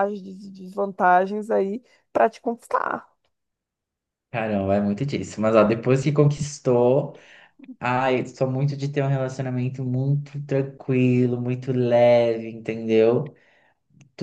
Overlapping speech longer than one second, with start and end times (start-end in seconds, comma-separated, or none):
none